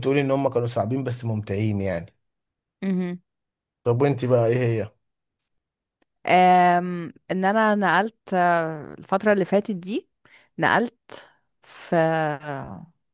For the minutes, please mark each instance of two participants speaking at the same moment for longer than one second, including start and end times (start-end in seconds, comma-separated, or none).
none